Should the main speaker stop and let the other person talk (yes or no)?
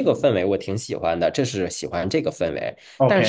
no